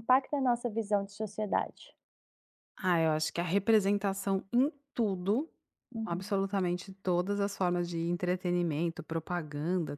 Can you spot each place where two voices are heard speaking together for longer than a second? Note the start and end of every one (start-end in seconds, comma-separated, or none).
none